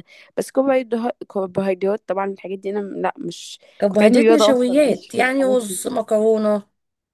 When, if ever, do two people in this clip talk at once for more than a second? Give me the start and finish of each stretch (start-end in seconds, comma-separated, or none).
3.8-5.8